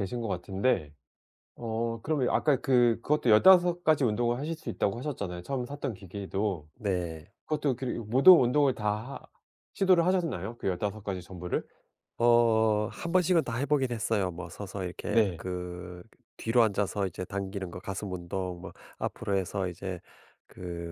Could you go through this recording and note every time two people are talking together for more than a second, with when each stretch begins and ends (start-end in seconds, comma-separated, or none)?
none